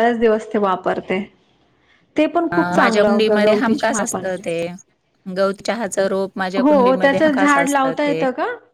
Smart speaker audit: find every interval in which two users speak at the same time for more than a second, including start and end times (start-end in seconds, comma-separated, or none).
2.5-4.4, 6.6-8.2